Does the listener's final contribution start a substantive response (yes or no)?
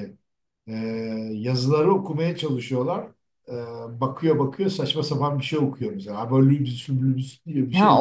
yes